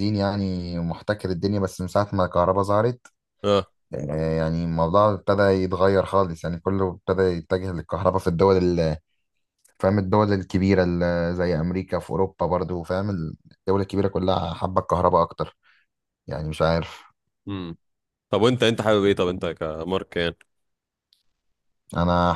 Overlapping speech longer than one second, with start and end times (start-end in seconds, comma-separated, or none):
none